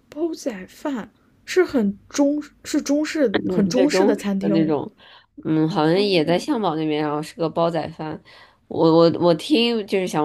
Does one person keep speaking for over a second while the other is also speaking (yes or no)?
yes